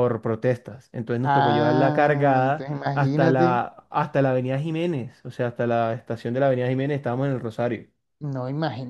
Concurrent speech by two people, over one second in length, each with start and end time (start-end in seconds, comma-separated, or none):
1.2-3.6